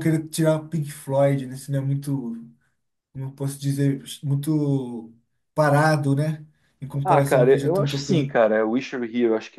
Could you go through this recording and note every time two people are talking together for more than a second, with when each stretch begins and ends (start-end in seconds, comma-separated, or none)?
7.0-8.3